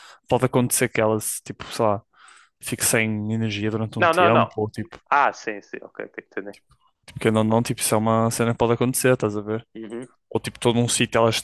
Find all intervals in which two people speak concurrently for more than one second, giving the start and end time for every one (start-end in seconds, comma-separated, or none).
none